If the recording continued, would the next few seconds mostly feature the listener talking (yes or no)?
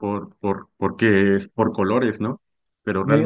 no